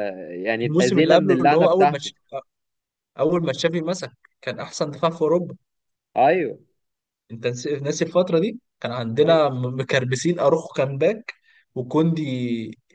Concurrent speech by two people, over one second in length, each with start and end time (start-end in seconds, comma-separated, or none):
0.6-2.1